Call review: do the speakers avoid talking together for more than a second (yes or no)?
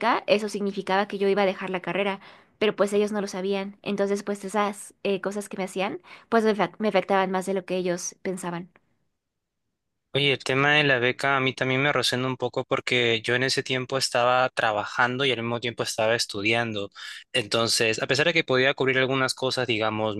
yes